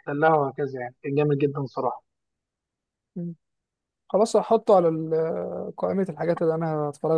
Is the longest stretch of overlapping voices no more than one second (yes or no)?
yes